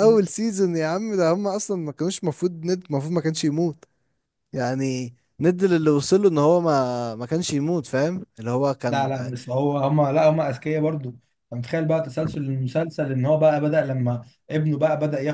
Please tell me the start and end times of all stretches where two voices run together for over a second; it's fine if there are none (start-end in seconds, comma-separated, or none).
none